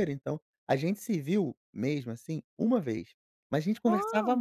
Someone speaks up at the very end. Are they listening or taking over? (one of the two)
listening